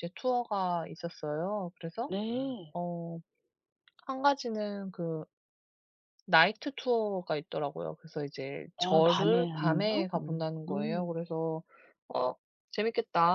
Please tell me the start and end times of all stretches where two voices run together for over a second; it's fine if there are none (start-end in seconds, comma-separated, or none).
8.8-11.1